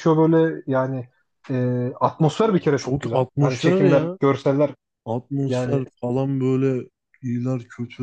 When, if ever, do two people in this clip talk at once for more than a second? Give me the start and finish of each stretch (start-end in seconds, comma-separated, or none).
2.6-4.2